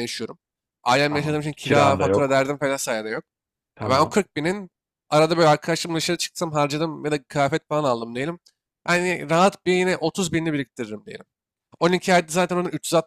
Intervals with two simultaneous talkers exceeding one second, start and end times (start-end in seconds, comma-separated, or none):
1.1-2.4